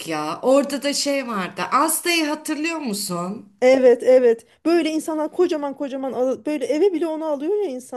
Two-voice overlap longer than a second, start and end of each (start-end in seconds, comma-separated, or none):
none